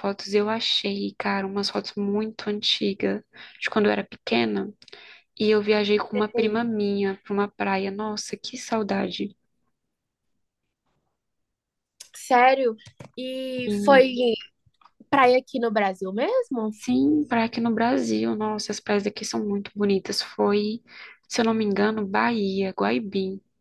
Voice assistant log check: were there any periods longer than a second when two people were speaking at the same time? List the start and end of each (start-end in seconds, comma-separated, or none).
none